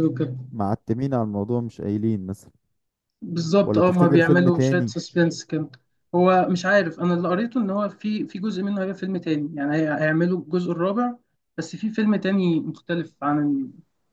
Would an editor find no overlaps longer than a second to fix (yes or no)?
no